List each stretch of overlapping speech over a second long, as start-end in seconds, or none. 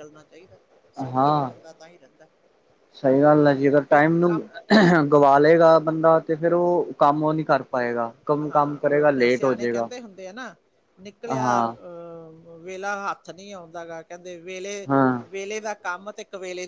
8.5-9.8